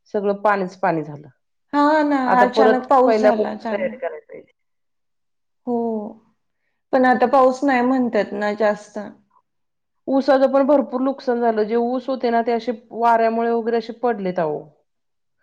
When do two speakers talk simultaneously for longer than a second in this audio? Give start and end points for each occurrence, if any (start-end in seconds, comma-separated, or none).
2.3-3.9